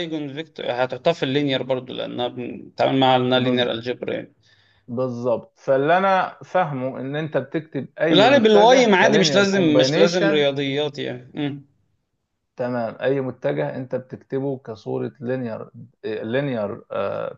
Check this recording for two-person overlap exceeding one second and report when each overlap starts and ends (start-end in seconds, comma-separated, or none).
8.1-10.4